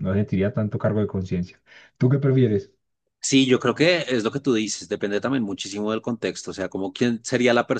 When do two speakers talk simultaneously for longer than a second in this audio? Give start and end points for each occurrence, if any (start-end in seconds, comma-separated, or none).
none